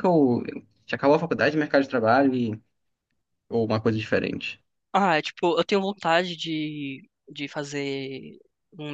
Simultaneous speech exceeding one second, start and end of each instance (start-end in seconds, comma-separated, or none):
none